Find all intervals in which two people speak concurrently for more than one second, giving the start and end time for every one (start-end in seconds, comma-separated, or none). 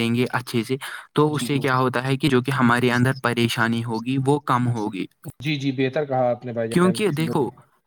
none